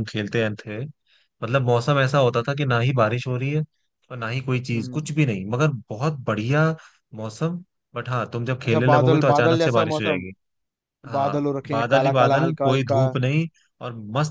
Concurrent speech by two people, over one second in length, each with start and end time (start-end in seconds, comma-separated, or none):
8.7-10.2, 11.2-13.0